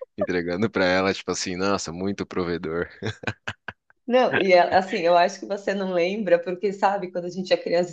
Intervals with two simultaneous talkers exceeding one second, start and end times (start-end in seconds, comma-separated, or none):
none